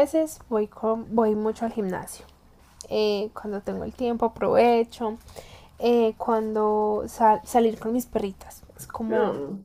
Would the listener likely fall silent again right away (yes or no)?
yes